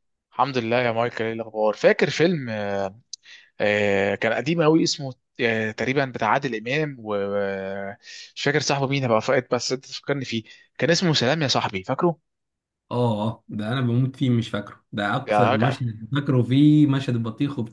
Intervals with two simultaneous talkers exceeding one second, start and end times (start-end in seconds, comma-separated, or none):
none